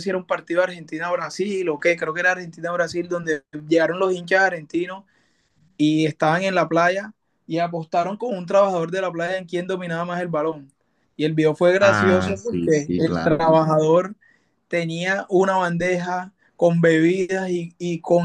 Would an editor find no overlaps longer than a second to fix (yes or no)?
no